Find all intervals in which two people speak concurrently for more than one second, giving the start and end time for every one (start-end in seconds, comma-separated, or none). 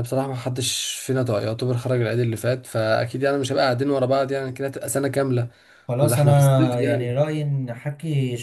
6.0-7.2